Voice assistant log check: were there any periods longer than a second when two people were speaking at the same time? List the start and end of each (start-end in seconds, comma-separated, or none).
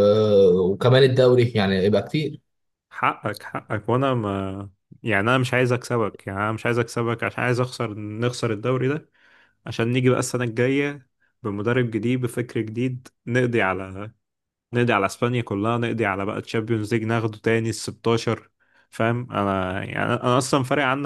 none